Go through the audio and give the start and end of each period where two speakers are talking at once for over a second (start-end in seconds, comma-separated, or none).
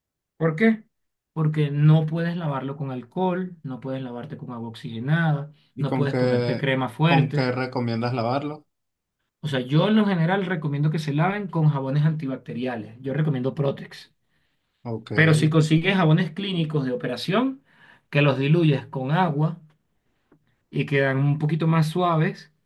5.8-7.5